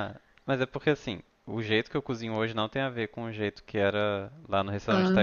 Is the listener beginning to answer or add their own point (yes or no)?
no